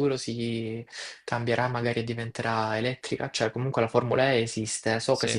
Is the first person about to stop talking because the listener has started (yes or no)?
no